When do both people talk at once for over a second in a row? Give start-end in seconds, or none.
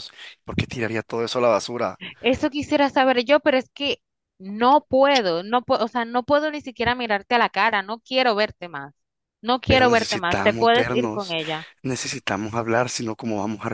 9.7-11.3